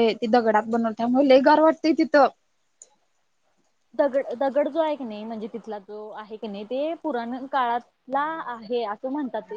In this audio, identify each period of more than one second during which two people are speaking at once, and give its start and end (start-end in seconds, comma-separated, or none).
none